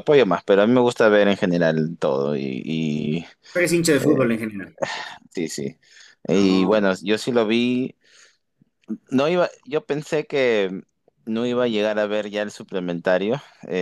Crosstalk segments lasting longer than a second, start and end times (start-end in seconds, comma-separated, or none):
none